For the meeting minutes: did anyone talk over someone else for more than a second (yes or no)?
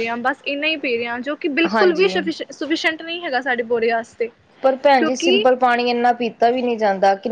no